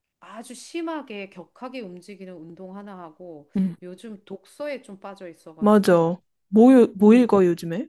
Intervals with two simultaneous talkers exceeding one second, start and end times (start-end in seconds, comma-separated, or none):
none